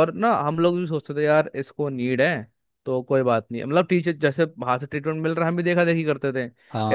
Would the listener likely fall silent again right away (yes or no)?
yes